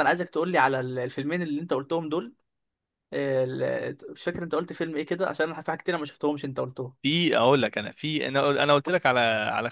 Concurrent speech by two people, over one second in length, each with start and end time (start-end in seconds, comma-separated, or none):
none